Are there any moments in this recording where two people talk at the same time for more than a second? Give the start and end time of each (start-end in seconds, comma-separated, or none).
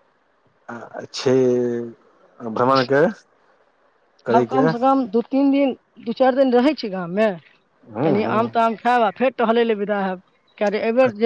none